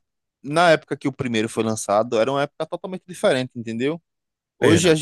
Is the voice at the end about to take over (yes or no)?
no